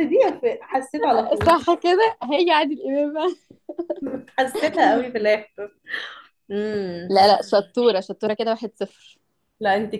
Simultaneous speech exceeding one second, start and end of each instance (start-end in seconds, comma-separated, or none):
none